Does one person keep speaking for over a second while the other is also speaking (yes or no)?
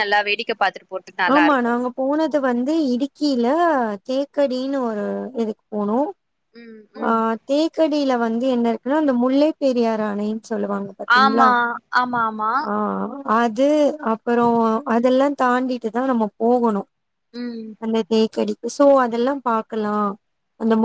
no